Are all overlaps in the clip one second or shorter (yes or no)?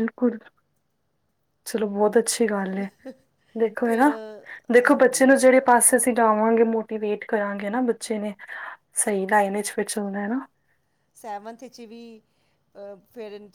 yes